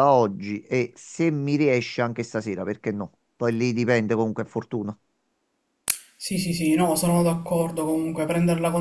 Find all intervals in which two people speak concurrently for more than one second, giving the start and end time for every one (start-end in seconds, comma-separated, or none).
none